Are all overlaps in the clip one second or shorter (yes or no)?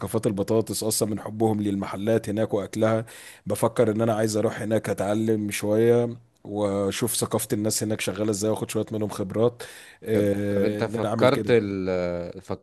no